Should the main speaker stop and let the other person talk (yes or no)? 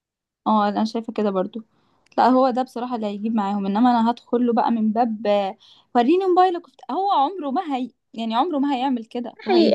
yes